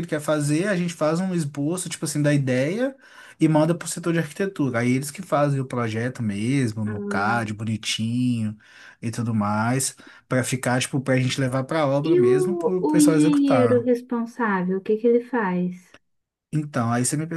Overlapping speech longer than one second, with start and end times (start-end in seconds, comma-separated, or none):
12.0-13.9